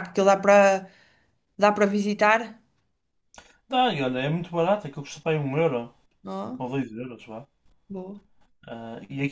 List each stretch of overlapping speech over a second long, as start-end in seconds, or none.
none